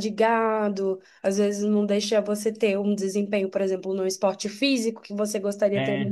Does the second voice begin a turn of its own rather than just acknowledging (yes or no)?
no